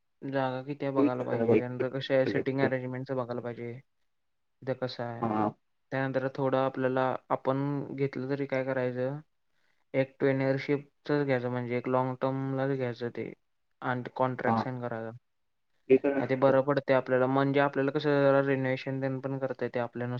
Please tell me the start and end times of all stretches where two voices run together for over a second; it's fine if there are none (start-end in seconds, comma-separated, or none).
1.0-2.7